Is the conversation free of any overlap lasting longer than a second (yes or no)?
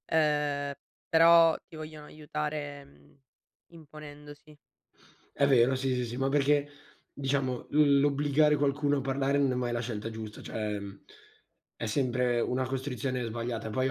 yes